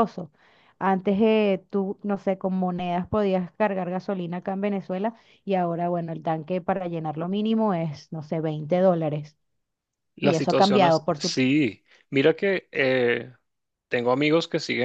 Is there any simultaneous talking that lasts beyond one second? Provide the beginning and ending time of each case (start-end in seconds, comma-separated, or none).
10.2-11.4